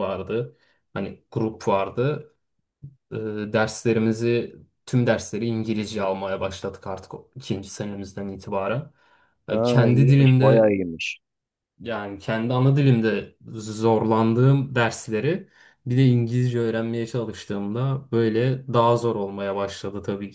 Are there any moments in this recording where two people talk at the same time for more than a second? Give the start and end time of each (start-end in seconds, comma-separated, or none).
9.5-10.7